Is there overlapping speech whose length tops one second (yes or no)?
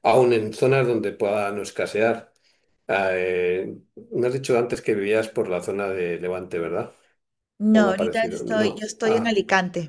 yes